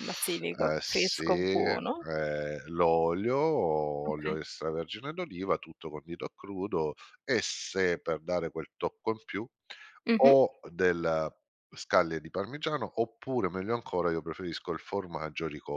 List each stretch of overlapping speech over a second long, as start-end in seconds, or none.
0.6-2.0